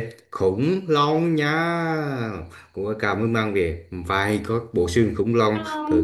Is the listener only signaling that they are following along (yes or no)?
yes